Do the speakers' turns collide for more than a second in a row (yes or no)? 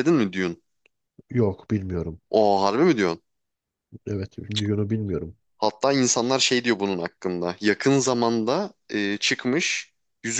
no